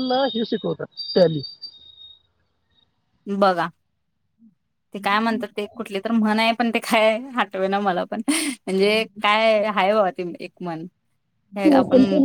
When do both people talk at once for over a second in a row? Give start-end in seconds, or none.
none